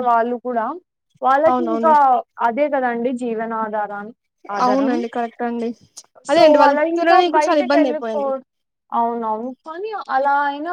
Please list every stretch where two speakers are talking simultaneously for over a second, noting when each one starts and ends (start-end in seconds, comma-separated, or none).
6.3-8.2